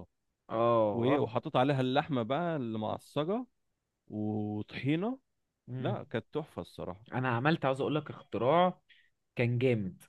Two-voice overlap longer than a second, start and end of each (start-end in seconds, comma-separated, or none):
none